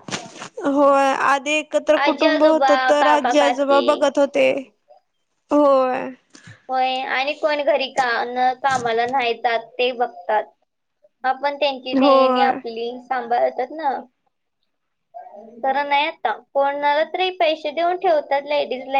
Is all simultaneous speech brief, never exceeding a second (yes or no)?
no